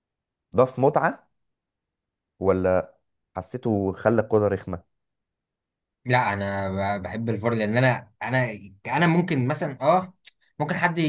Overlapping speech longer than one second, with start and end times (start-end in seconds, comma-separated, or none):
none